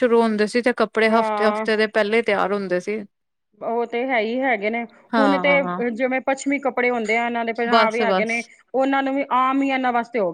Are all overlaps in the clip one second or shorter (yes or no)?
yes